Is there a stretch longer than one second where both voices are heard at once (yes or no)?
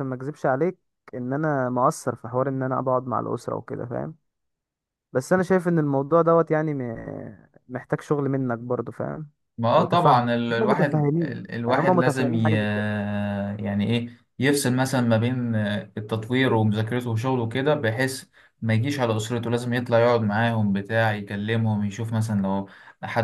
yes